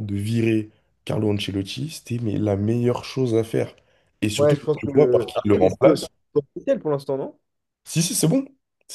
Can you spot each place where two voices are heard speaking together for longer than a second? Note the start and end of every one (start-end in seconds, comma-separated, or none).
4.4-5.8